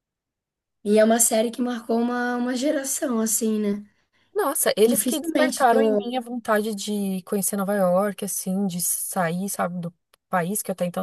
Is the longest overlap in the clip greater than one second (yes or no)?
yes